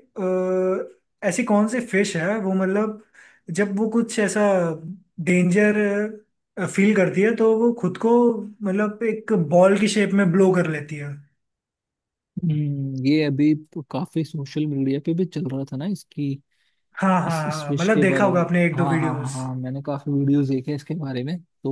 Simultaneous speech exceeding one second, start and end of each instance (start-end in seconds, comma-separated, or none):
17.3-19.4